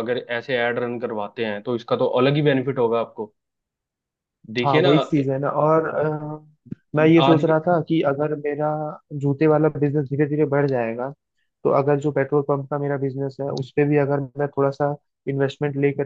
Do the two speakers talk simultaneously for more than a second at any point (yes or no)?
no